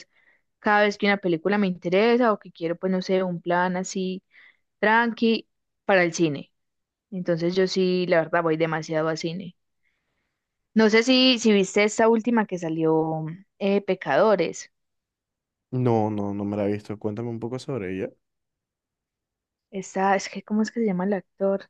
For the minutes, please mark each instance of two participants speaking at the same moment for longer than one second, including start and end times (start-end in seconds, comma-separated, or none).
none